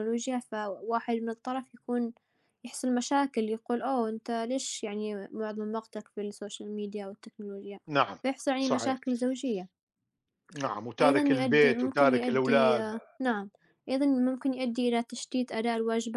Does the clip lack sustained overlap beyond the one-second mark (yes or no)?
no